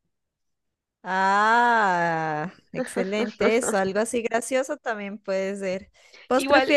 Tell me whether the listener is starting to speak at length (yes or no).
no